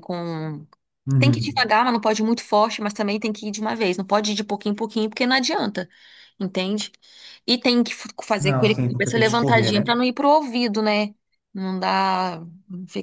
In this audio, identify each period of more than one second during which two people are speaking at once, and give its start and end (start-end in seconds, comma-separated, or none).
8.4-9.9